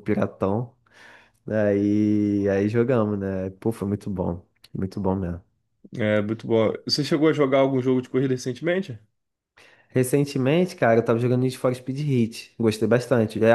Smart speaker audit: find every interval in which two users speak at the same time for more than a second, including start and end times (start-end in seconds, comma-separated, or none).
none